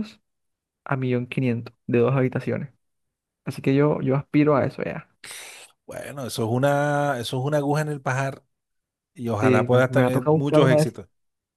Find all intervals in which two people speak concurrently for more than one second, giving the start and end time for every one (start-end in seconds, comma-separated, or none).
9.4-10.9